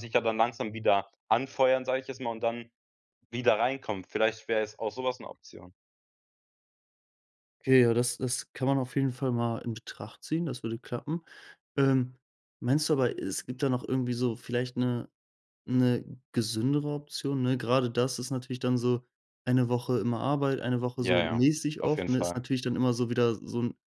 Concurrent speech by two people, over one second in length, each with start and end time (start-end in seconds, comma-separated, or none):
20.9-22.4